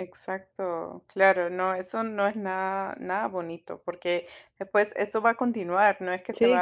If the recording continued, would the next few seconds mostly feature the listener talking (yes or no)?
no